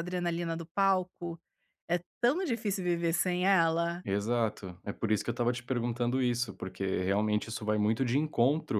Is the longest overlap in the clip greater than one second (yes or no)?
no